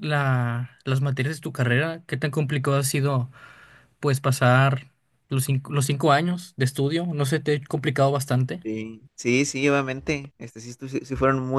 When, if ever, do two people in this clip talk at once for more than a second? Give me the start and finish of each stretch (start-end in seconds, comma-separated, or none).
none